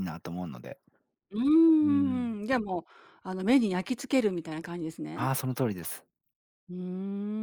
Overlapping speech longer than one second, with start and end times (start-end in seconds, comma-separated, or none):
none